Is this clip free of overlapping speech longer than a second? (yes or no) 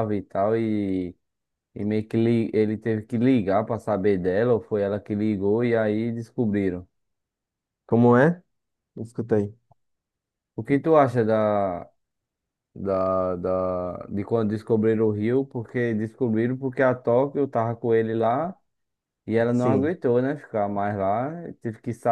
yes